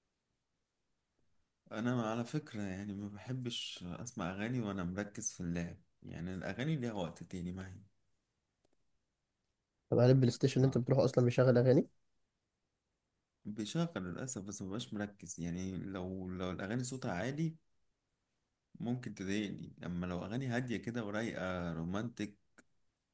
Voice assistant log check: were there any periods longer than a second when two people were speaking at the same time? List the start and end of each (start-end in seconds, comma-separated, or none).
none